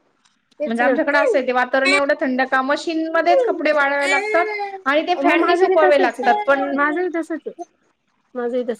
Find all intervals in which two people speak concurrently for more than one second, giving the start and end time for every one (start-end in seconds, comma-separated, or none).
5.2-6.8